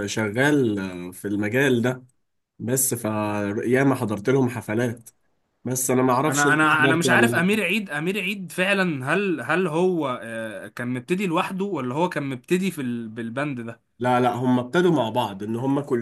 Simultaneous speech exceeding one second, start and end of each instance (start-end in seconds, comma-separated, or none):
6.3-7.5